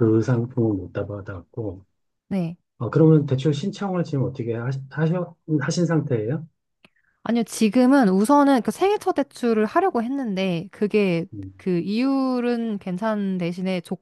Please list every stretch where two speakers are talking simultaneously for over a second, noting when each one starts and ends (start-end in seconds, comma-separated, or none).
none